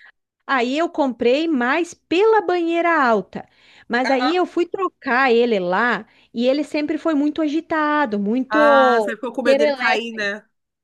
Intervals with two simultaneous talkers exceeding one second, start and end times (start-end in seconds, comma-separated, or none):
8.5-10.2